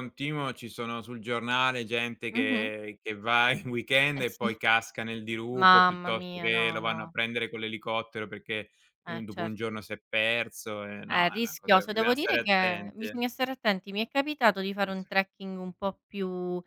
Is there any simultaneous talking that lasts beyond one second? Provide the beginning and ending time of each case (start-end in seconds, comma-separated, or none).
5.5-7.1, 11.0-13.2